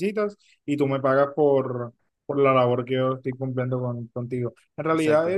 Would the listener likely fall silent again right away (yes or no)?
yes